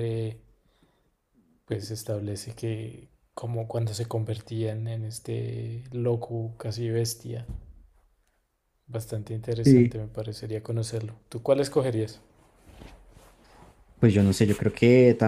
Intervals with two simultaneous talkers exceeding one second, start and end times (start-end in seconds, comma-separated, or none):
none